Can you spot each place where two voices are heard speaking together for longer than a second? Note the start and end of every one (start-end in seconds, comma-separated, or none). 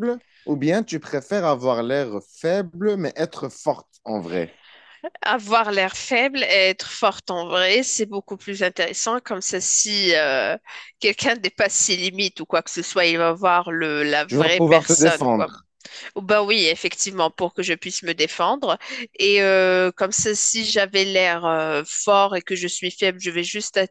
14.3-15.5